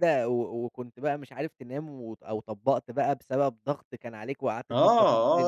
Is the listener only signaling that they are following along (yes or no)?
no